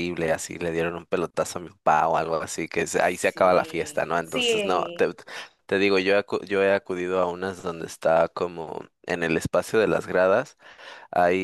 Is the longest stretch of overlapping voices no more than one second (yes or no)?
no